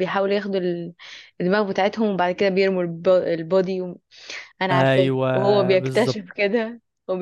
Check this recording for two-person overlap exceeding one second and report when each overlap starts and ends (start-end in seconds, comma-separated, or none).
4.7-6.2